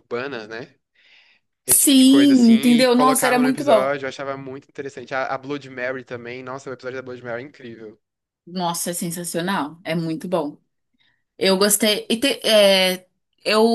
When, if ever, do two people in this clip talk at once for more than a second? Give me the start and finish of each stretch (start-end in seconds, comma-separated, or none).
1.7-3.9